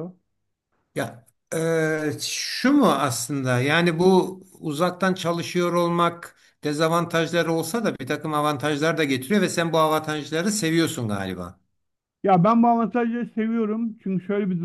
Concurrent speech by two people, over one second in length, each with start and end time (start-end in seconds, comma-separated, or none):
none